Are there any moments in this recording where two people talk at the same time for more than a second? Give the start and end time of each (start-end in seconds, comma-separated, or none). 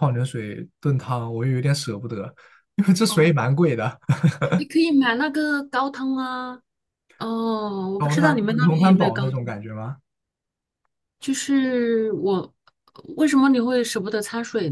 8.0-9.6